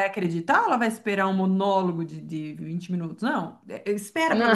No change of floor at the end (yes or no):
yes